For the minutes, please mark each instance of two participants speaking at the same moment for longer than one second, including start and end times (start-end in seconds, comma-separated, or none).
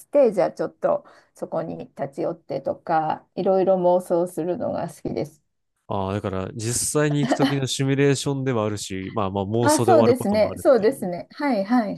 9.6-11.1